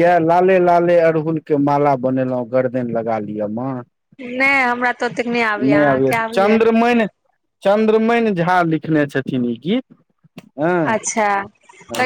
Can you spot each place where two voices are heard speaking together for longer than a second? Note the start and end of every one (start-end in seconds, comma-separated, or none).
none